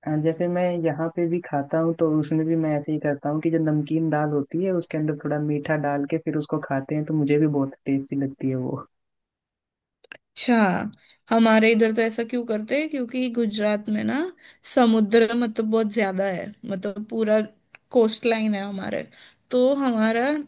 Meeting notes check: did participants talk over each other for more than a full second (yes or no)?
no